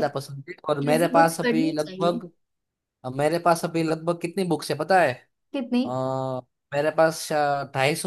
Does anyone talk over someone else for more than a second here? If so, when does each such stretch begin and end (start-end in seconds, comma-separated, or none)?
0.6-2.2